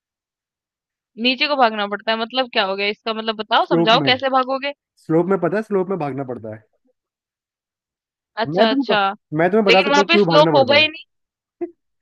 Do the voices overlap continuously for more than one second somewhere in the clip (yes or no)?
yes